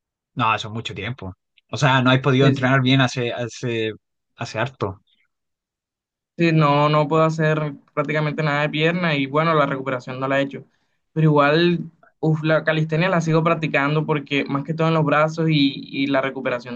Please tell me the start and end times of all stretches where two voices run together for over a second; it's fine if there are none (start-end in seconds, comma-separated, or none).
none